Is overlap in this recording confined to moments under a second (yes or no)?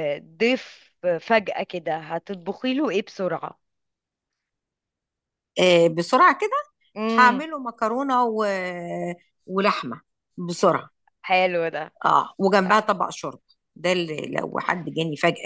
yes